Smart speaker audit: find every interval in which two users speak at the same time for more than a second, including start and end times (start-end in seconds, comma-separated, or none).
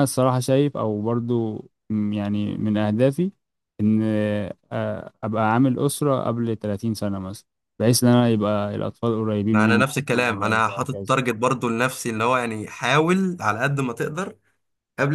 9.5-11.2